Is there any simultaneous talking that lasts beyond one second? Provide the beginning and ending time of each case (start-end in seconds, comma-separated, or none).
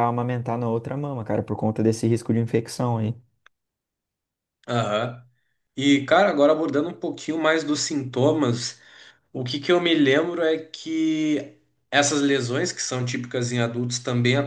none